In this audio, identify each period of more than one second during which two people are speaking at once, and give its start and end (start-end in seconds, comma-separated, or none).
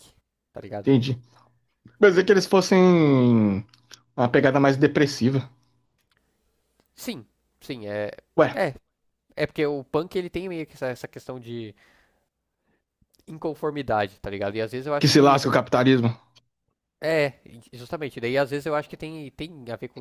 none